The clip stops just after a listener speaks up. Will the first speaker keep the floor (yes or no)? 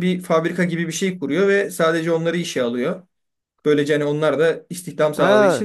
no